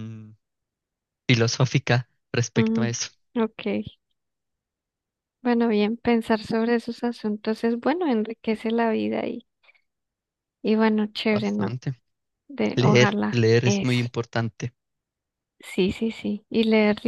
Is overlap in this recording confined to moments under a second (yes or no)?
no